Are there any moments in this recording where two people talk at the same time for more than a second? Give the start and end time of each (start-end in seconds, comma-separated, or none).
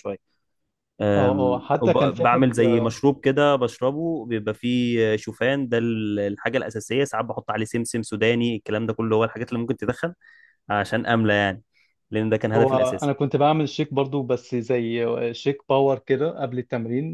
1.2-2.6